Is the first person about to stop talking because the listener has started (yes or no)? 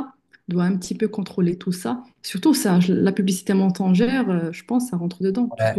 yes